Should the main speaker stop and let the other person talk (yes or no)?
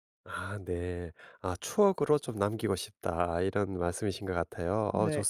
no